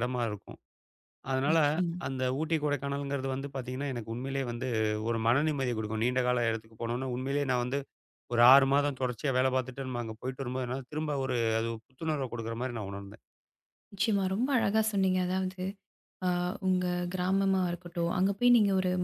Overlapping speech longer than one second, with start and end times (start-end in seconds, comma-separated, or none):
none